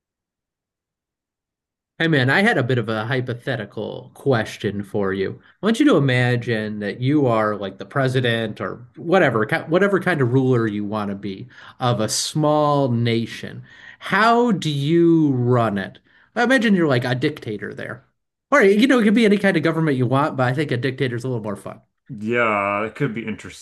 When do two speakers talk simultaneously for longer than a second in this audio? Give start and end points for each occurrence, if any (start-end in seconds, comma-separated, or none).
none